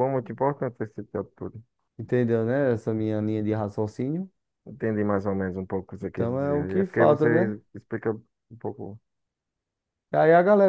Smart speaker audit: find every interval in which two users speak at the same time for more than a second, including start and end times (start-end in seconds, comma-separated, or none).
6.0-7.5